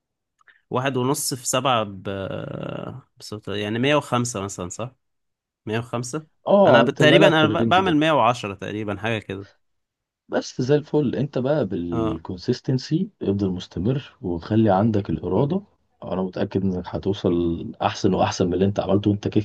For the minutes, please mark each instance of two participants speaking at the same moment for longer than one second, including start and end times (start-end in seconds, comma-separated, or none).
6.7-8.0